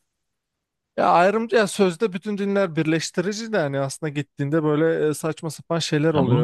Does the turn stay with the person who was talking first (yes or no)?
no